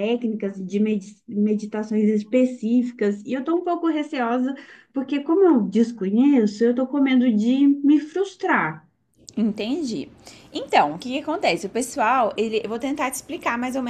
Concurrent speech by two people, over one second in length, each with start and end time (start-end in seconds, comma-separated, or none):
none